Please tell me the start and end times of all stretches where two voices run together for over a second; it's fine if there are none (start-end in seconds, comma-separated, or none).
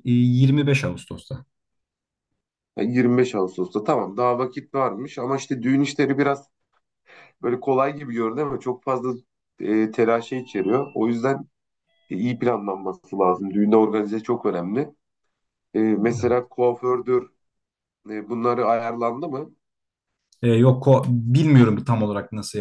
none